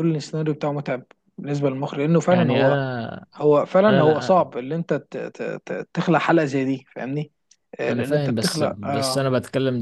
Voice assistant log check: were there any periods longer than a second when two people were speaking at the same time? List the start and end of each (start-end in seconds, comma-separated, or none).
7.9-9.2